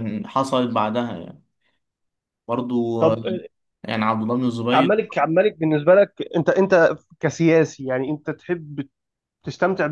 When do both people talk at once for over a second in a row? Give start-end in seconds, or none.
none